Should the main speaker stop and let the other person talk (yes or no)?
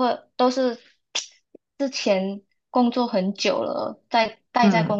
no